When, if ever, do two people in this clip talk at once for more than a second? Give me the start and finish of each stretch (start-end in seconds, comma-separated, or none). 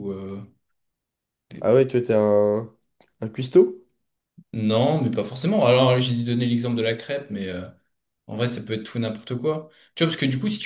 none